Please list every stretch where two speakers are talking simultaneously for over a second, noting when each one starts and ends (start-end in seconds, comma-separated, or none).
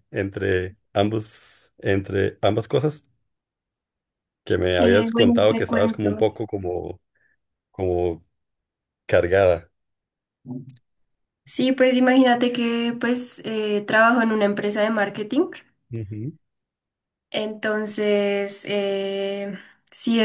4.8-6.3